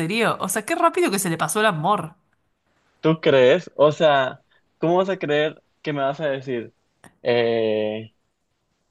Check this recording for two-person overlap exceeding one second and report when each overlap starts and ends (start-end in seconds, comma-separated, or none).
none